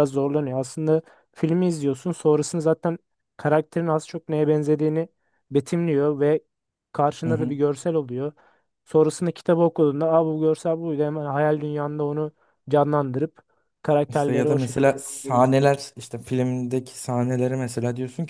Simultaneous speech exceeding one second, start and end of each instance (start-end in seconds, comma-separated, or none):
14.1-15.5